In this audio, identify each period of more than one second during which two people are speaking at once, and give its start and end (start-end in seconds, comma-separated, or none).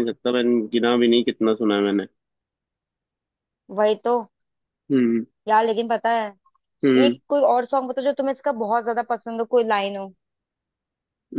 none